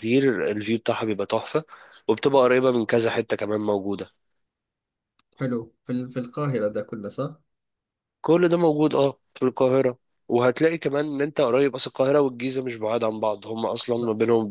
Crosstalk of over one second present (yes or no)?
no